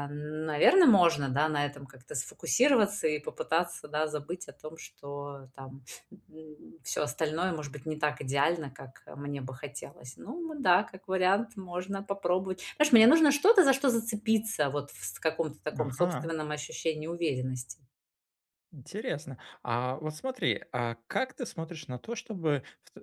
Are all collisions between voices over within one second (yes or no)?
yes